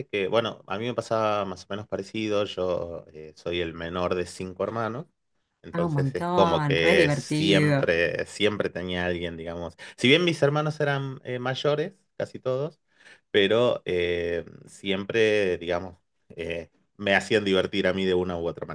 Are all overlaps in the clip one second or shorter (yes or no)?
no